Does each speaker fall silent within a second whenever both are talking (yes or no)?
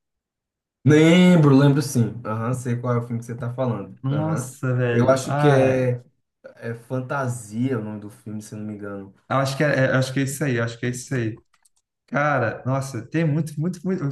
no